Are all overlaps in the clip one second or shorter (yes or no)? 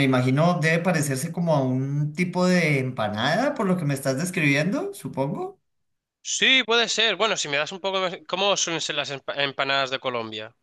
yes